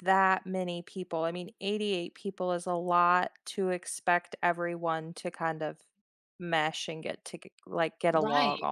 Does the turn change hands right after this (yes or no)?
yes